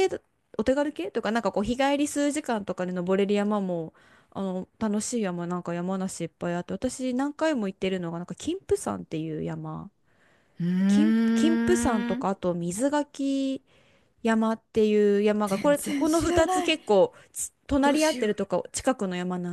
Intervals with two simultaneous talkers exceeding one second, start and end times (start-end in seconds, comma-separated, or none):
15.4-16.8